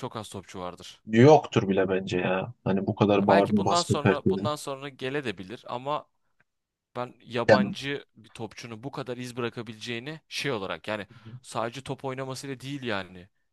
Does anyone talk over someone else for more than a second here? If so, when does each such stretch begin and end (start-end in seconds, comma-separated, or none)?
3.2-4.5